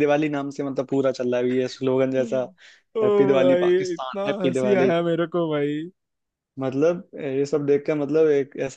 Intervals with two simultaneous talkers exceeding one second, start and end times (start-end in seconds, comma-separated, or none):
3.0-4.9